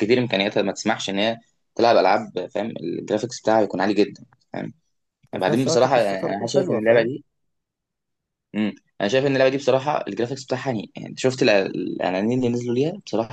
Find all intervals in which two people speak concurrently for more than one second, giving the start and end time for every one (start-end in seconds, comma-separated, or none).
5.3-7.1